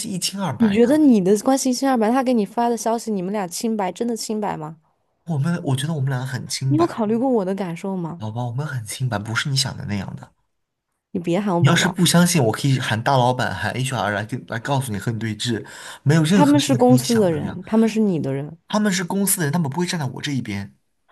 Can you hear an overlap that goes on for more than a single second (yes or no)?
yes